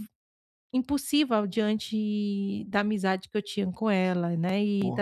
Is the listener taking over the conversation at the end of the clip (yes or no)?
yes